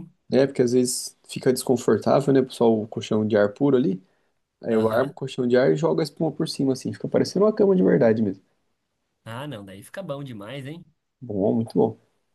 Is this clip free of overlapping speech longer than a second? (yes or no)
yes